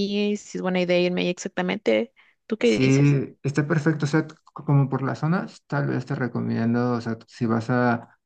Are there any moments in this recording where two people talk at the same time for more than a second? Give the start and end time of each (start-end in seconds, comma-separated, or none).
none